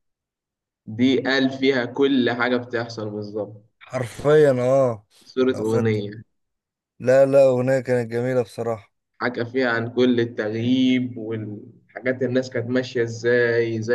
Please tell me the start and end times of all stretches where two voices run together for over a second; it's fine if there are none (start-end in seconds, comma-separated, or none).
none